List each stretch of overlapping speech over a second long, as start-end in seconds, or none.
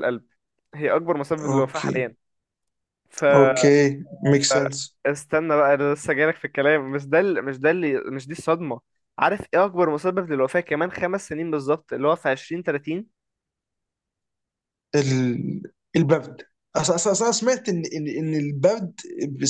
none